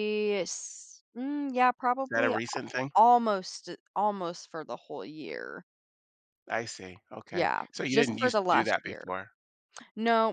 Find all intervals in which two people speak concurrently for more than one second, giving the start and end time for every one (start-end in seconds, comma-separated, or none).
7.3-9.0